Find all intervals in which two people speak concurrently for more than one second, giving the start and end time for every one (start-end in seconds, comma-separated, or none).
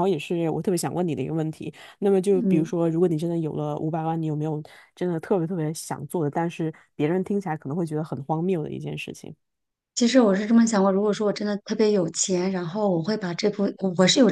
none